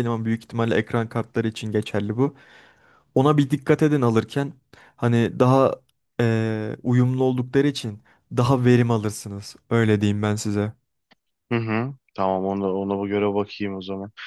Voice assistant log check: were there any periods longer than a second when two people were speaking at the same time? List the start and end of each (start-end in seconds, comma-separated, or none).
none